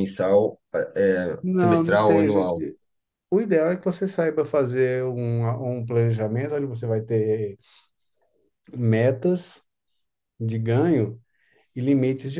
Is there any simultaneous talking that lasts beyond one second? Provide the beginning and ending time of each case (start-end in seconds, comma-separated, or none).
1.4-2.6